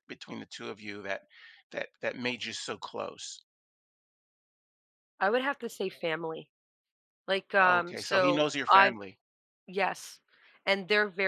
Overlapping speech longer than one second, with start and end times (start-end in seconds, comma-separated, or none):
7.6-9.0